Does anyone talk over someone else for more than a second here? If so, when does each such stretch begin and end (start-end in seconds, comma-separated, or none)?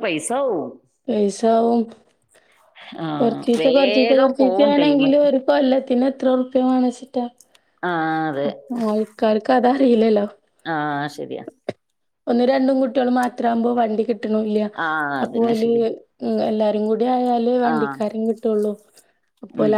3.2-5.1